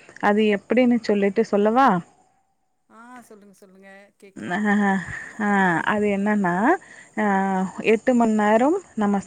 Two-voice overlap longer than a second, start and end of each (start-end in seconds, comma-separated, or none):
none